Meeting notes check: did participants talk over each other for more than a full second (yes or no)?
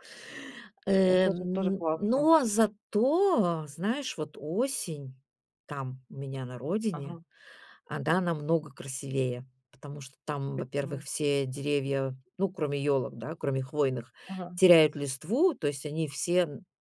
yes